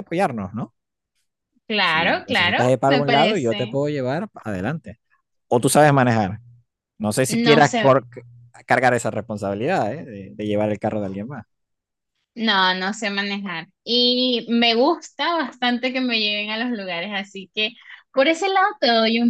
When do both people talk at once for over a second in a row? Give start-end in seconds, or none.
1.8-3.8